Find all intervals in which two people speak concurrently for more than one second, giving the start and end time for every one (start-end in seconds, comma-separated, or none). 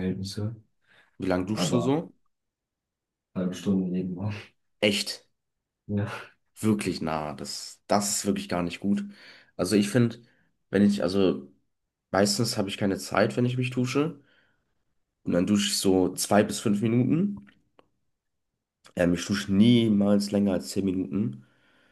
none